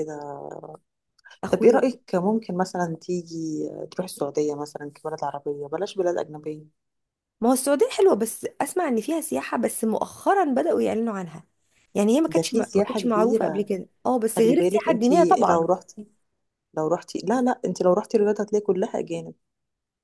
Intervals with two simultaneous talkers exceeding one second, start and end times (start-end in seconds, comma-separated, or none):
12.3-13.6, 14.4-15.7